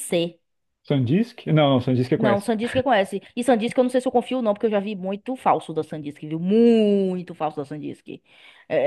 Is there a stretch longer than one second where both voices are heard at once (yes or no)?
no